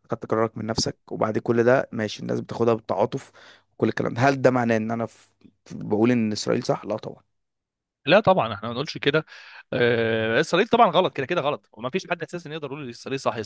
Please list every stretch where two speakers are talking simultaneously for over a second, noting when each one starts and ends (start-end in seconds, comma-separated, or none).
none